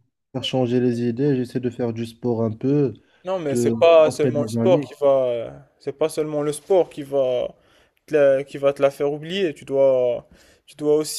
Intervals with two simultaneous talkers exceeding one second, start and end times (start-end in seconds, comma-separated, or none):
3.5-4.9